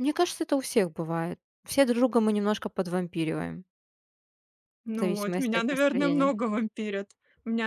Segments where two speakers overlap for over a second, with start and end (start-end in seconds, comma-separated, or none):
5.0-6.3